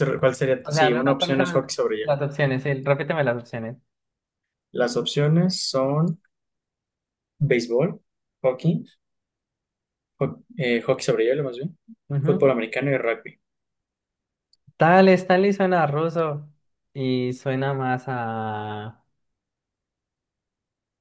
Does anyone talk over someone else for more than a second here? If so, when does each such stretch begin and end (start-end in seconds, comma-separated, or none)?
0.6-2.1